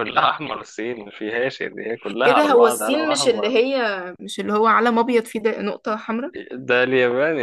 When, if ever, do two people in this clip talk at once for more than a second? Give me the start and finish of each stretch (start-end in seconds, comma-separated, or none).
2.2-3.6